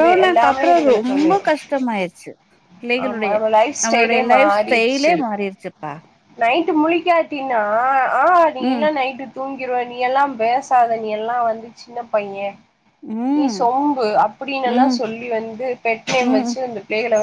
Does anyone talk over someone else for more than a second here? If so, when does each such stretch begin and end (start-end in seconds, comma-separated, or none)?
3.8-5.2